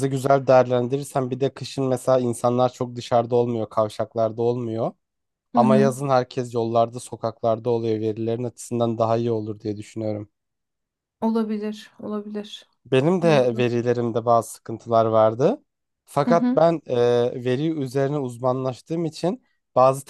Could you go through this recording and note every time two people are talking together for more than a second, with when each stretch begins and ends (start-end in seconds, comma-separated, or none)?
none